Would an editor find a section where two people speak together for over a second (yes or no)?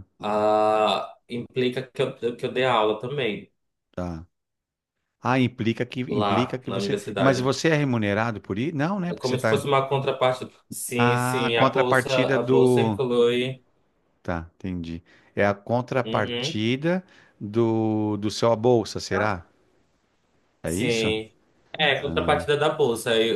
yes